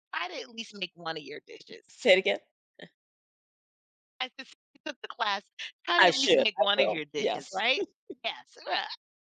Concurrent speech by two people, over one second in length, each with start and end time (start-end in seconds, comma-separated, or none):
6.0-7.6